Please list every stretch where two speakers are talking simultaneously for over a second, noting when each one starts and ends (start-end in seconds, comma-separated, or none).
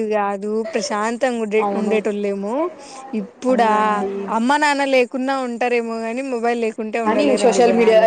none